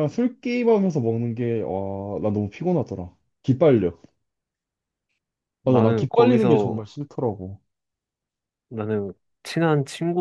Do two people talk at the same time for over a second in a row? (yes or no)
yes